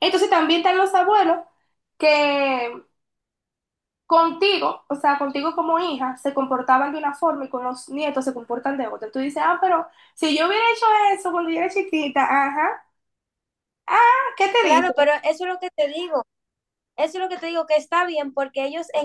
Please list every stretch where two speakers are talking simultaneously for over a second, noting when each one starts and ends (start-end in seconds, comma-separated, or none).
none